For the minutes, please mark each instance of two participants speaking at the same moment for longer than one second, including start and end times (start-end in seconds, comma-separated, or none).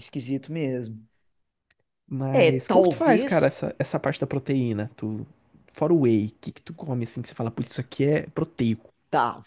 2.3-3.5